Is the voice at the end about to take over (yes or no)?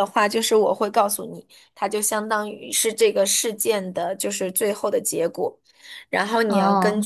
no